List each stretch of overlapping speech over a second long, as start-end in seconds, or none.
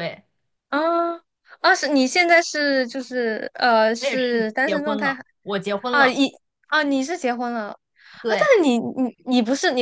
4.0-5.2